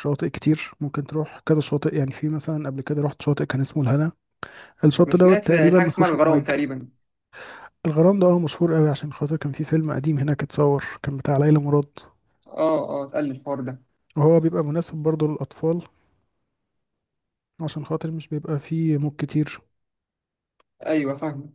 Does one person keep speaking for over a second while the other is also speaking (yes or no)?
yes